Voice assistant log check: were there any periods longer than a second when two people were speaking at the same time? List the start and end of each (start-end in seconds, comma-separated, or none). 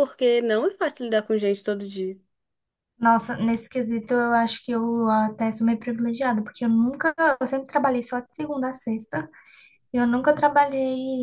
none